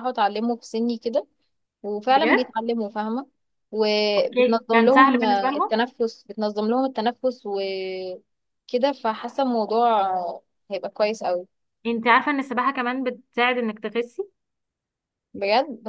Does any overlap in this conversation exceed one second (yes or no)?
yes